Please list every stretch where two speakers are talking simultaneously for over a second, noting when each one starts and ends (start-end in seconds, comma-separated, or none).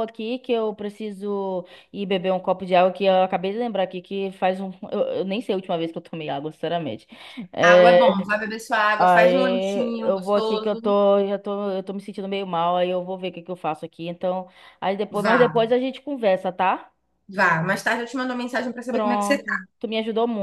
9.0-10.9